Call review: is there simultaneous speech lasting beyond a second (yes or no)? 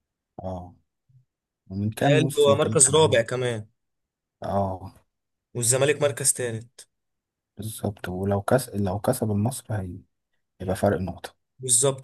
yes